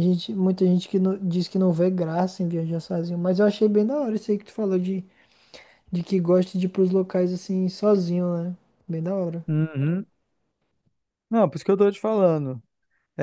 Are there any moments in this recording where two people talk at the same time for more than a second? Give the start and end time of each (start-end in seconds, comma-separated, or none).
none